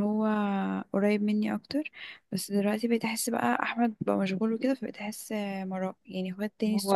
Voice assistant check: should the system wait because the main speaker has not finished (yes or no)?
yes